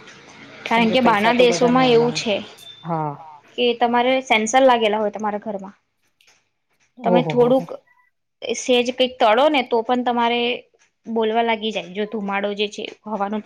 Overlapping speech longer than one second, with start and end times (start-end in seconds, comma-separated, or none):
0.7-2.3